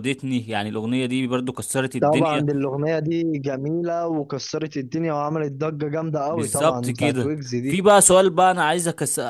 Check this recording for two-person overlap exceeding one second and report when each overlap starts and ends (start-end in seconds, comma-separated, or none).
6.3-7.8